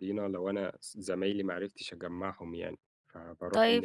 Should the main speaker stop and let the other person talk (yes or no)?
yes